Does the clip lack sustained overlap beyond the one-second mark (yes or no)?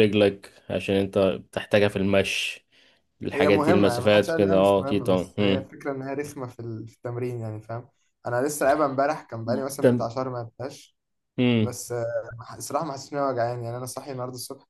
no